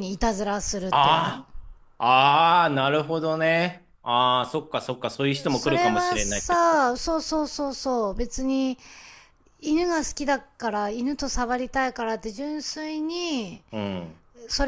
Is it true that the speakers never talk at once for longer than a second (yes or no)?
no